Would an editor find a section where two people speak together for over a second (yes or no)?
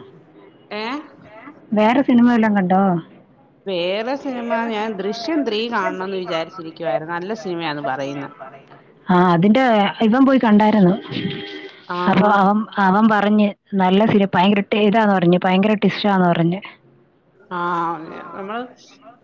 yes